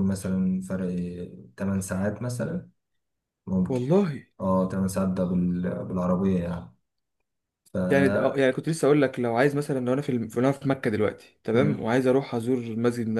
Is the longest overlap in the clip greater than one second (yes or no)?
no